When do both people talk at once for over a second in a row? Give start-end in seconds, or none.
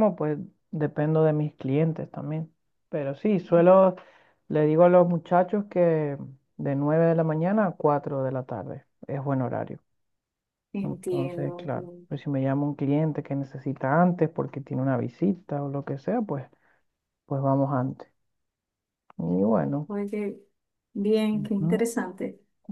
10.8-12.1